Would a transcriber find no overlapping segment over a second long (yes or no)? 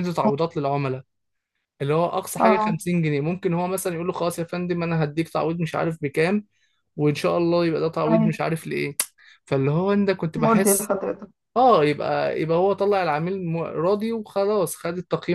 yes